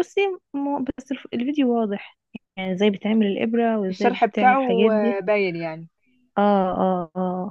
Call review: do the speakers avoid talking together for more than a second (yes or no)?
no